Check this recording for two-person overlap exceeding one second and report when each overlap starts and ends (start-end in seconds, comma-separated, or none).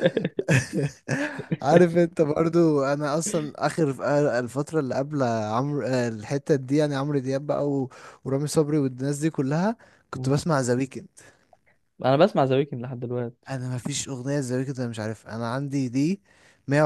none